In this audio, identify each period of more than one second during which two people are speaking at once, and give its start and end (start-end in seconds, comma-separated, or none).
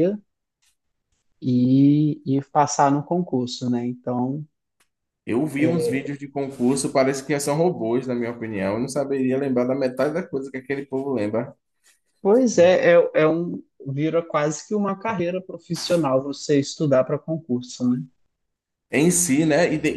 none